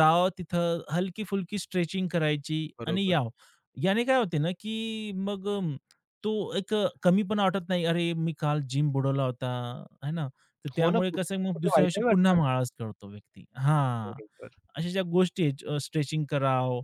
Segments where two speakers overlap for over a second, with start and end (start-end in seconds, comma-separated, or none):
10.8-12.4